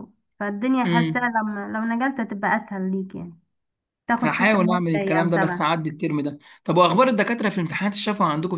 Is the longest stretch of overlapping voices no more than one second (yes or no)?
no